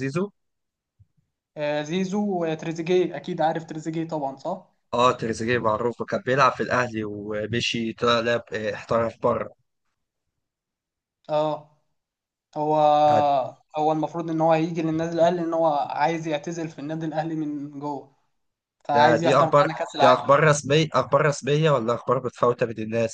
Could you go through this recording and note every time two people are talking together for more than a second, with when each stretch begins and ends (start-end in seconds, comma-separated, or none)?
18.9-20.4